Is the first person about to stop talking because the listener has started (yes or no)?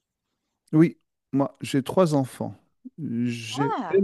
no